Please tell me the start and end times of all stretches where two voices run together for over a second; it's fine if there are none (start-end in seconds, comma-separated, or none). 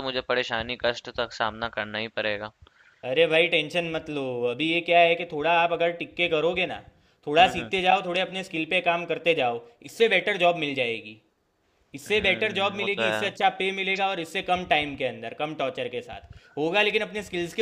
12.1-13.3